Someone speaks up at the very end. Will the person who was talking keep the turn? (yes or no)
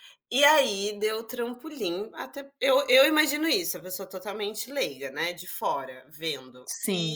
yes